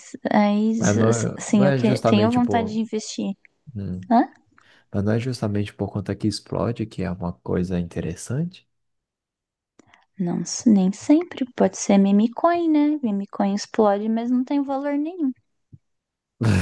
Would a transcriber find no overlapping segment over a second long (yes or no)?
no